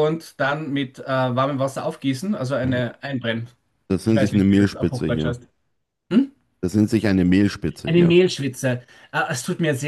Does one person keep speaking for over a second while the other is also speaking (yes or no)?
yes